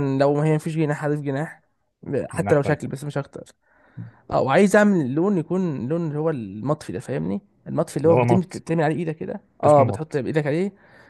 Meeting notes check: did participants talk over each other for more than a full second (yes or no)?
no